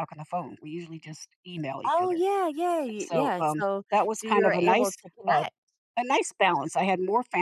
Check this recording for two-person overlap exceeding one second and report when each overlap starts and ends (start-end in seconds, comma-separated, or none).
3.0-5.4